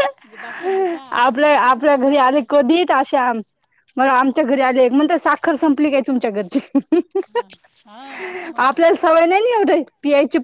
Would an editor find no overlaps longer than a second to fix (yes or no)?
no